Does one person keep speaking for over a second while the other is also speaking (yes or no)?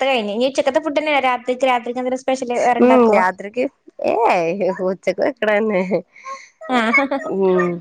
no